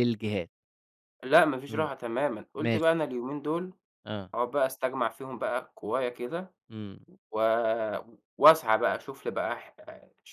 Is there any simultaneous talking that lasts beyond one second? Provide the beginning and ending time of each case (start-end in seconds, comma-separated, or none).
none